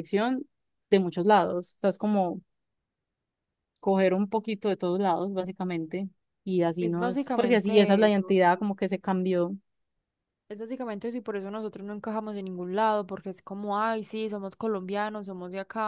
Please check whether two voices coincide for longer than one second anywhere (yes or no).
yes